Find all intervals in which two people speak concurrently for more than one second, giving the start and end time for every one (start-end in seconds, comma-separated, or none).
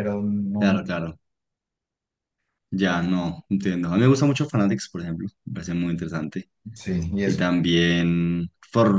none